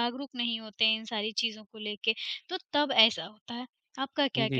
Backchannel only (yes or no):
no